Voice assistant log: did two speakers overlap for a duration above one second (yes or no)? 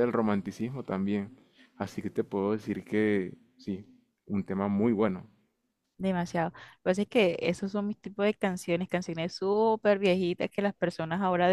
no